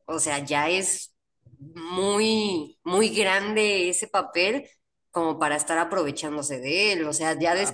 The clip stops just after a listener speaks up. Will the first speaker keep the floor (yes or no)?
no